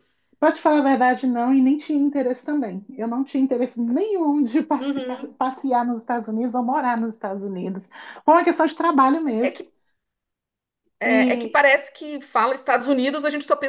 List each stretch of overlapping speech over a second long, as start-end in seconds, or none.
none